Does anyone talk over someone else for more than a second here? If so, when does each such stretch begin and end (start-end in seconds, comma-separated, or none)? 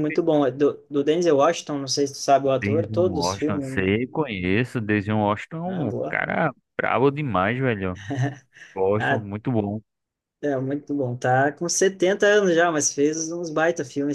2.6-3.9